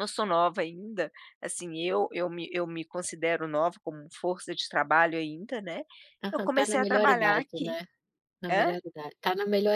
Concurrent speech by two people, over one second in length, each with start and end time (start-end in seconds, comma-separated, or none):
6.3-7.8